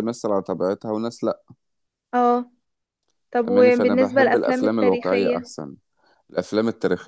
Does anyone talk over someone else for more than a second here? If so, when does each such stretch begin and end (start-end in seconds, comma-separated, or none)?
3.5-5.5